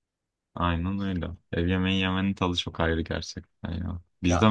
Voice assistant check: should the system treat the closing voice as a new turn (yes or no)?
no